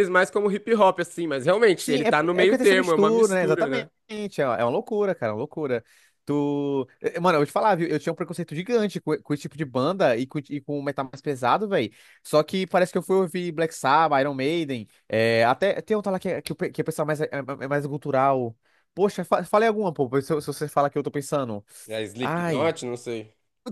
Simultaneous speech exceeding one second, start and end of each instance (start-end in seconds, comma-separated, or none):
1.8-3.9